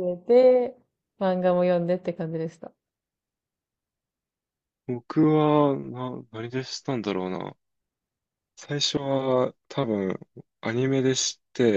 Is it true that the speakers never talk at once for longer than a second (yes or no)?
yes